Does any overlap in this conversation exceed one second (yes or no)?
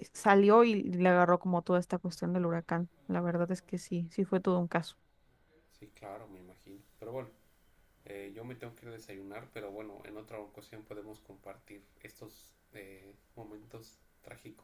no